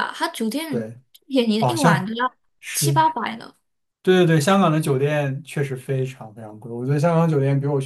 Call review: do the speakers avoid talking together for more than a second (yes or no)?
yes